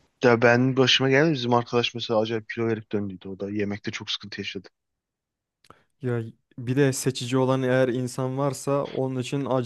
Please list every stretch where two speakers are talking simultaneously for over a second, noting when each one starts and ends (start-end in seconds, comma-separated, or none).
none